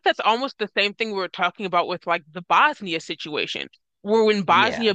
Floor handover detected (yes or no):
no